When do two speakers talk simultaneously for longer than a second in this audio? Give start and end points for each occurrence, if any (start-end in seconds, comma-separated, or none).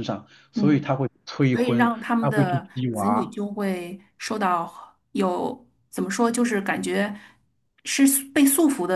1.5-3.4